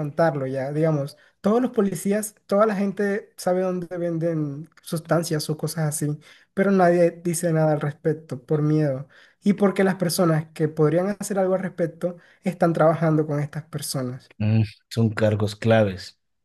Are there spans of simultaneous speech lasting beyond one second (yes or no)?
no